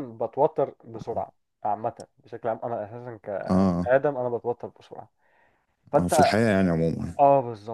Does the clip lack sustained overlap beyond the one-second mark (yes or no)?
yes